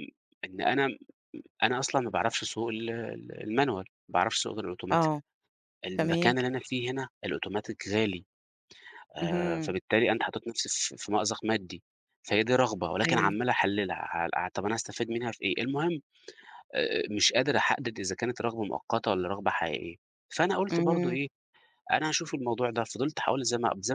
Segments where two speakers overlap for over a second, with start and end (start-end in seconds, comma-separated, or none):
none